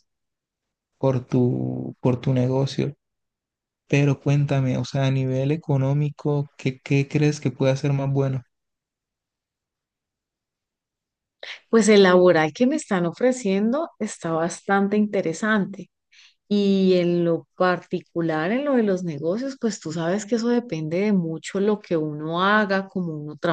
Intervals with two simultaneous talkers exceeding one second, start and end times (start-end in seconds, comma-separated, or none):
none